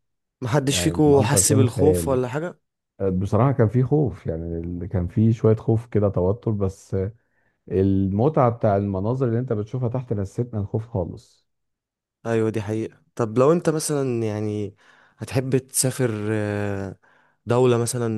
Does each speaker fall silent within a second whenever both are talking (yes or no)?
no